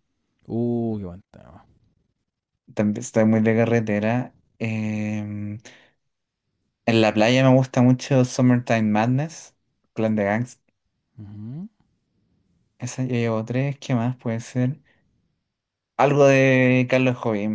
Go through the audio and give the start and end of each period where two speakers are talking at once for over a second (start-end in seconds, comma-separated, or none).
none